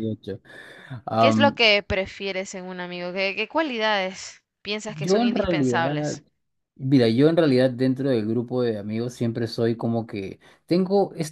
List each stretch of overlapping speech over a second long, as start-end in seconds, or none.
4.8-6.2